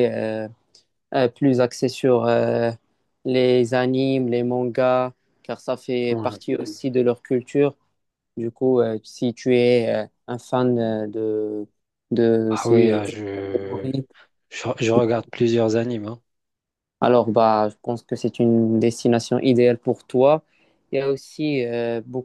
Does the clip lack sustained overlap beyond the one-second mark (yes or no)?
no